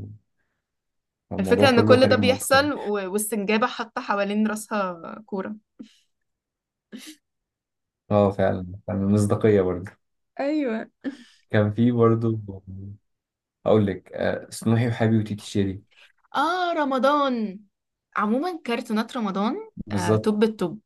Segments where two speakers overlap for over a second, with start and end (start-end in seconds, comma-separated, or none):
1.4-2.7